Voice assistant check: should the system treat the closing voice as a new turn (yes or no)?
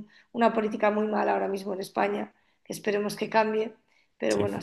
no